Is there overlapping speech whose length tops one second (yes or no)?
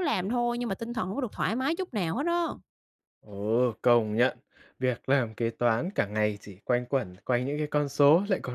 no